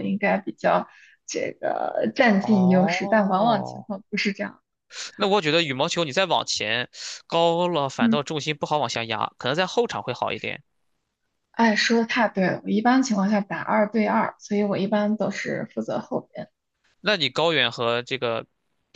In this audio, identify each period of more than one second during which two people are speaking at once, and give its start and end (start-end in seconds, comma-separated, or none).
2.4-3.9